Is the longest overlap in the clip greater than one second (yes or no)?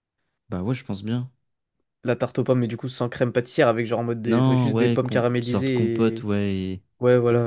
yes